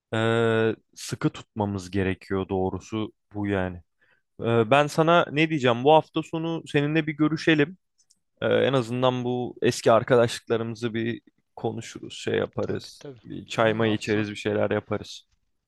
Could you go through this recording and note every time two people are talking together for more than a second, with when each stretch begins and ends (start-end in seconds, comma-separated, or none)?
12.6-14.3